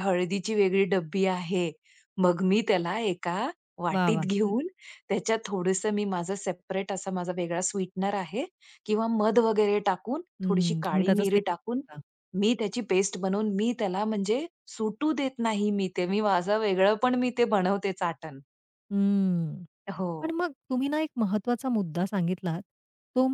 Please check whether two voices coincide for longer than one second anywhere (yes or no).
yes